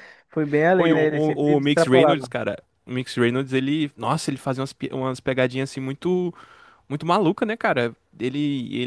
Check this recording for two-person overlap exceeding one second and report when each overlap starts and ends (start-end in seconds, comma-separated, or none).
0.7-2.3